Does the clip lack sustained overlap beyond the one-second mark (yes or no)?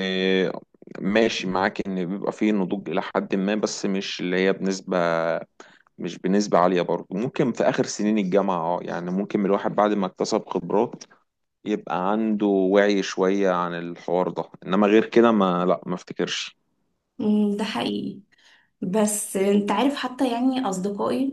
yes